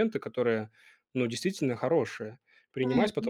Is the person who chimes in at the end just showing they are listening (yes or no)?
yes